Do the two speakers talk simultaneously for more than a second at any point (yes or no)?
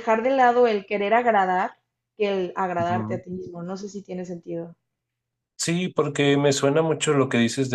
no